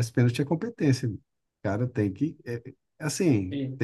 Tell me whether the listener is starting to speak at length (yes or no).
no